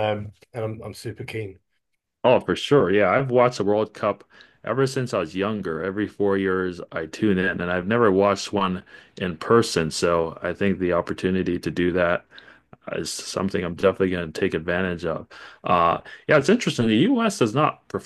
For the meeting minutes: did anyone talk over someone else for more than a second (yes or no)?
no